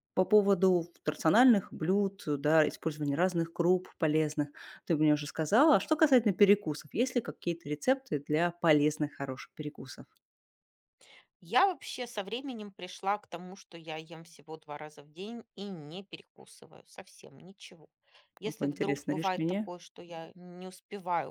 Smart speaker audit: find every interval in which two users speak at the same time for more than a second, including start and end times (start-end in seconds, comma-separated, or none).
18.4-19.7